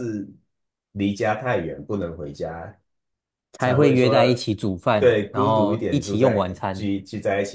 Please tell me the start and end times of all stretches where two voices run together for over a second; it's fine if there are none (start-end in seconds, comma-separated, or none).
5.0-6.9